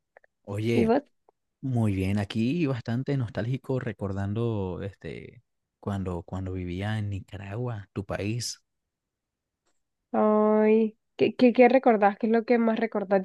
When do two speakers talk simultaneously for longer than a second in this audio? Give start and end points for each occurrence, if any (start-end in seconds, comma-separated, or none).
none